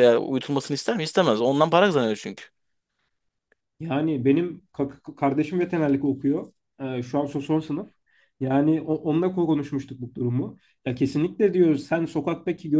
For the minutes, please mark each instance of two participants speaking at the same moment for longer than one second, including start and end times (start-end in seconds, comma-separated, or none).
none